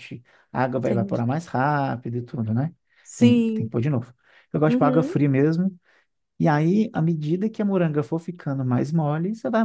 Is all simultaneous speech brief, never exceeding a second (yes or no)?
yes